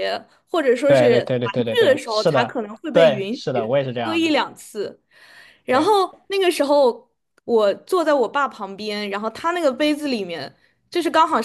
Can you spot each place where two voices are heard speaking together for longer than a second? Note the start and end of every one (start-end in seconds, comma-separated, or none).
0.8-4.4